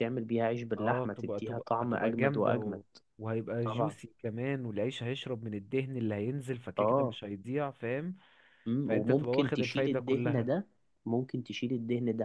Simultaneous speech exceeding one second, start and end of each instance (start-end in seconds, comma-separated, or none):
0.8-2.8, 8.9-10.5